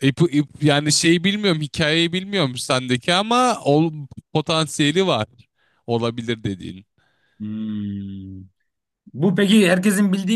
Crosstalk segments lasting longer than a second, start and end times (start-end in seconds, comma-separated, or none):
none